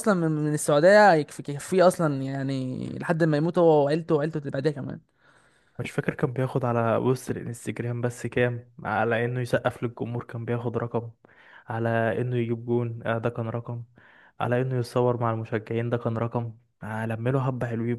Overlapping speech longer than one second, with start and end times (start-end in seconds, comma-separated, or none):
none